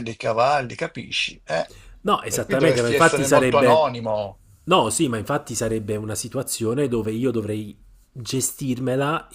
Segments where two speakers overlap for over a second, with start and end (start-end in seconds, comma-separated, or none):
2.3-3.9